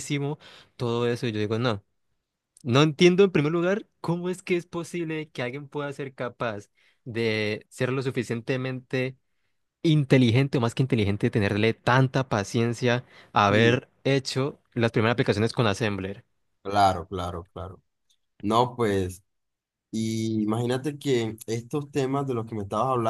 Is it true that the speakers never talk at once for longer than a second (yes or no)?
yes